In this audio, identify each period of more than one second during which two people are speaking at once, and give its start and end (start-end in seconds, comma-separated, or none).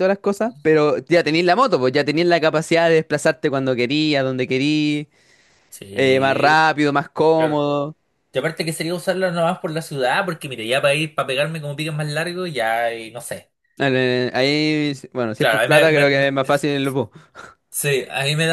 15.4-16.7